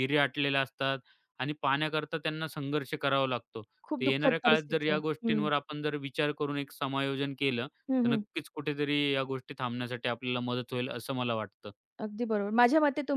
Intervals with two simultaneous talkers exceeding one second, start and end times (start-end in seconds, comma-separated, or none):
3.9-5.5